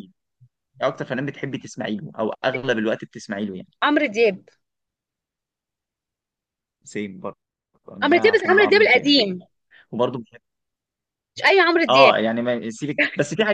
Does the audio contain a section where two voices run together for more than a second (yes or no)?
yes